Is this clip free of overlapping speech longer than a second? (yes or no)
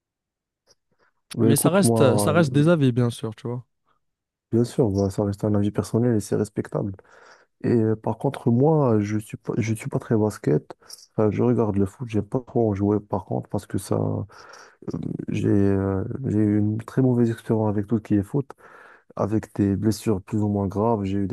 no